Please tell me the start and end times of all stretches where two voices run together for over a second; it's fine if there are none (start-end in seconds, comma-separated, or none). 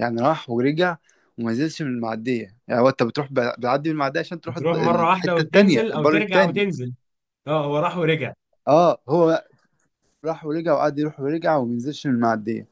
4.5-6.6